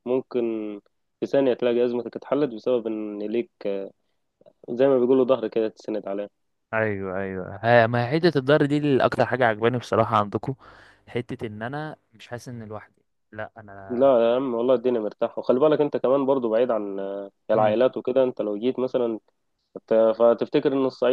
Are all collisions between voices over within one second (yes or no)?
yes